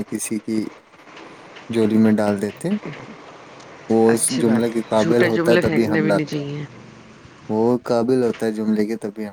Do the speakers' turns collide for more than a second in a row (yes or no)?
yes